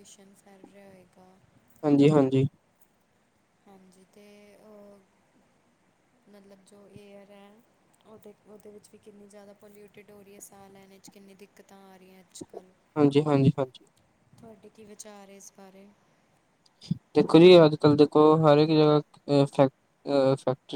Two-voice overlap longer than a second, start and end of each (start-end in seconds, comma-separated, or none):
none